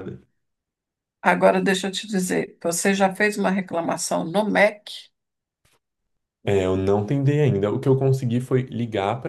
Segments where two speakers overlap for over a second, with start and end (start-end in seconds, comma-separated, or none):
none